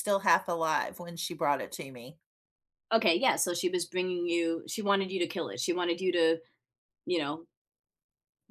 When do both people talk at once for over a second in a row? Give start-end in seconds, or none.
none